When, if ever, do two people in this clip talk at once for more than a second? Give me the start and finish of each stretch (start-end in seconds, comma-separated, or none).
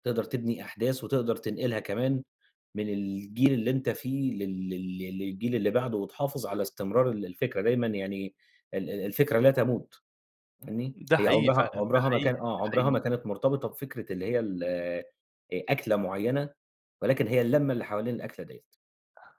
10.9-13.0